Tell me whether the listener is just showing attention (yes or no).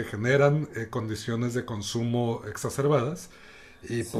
yes